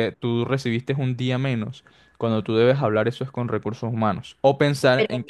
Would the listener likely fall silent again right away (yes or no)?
yes